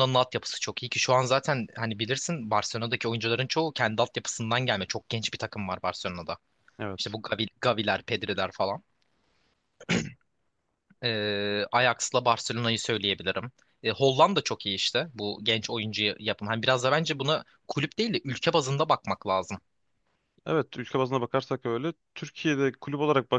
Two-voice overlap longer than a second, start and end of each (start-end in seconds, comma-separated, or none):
none